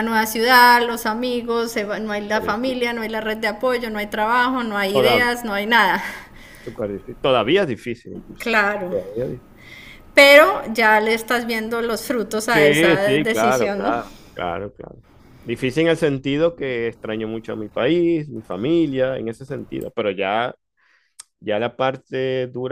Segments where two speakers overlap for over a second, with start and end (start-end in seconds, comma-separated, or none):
12.5-13.9